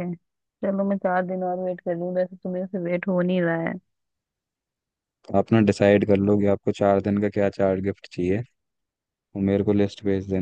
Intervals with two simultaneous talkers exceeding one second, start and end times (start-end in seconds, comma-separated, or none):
none